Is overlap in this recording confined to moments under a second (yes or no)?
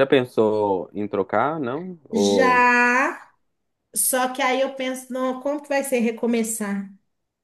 yes